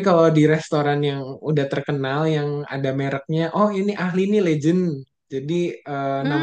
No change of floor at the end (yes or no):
yes